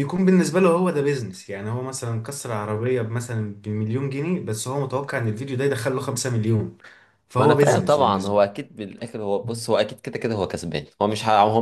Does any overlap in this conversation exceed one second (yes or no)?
yes